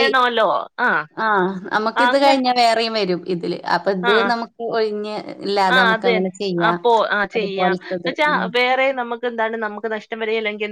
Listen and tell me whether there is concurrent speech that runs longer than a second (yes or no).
no